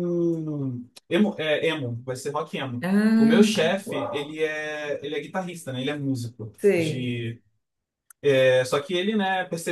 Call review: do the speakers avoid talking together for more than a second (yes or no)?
no